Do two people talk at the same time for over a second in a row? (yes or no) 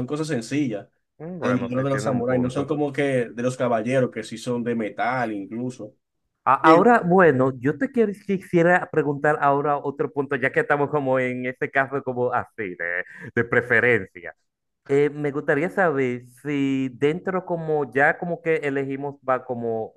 yes